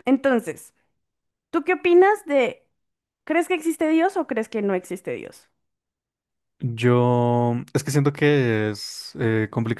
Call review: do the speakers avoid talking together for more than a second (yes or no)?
yes